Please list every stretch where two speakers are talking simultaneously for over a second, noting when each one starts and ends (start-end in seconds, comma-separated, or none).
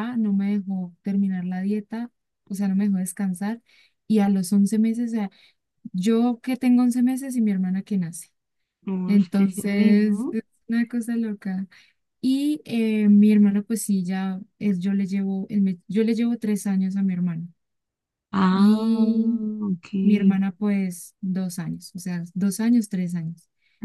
9.1-10.4